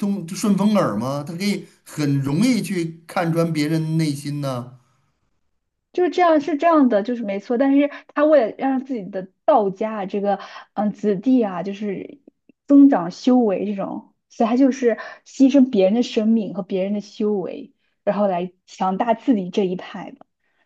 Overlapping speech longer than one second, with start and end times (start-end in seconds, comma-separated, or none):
none